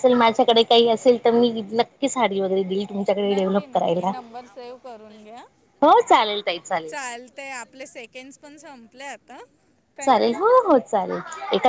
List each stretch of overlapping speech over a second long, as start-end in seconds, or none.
none